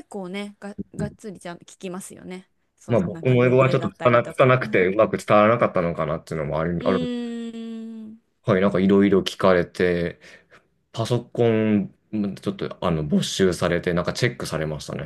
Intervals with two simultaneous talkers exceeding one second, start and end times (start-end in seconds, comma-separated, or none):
2.9-4.9